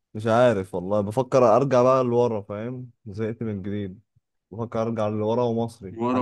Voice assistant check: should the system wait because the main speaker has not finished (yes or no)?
yes